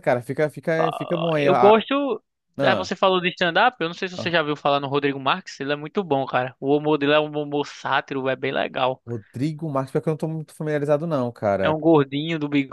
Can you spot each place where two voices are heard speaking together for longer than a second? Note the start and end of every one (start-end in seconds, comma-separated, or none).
none